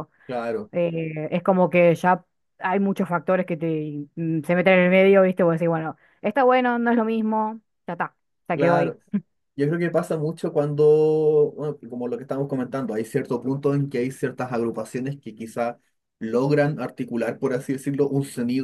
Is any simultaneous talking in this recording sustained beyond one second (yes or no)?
no